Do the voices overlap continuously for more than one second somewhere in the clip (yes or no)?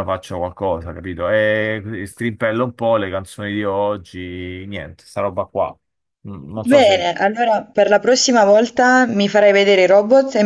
no